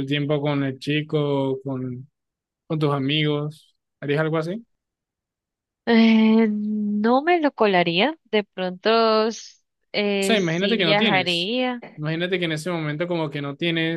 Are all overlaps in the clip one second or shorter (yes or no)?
no